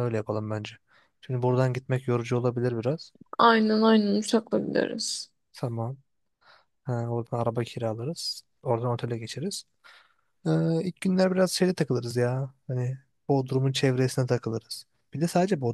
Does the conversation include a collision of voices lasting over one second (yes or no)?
no